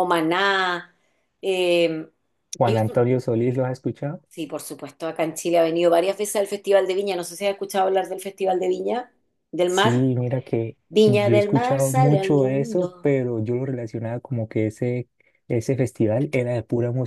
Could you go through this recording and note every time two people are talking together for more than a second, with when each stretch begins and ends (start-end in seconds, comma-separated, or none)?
10.9-13.1